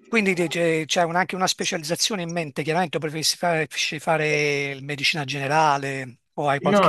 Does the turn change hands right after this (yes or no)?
yes